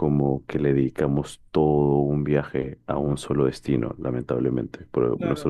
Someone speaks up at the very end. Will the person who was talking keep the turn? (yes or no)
no